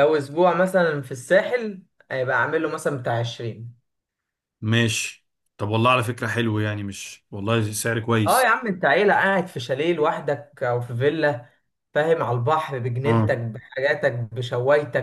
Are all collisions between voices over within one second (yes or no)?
yes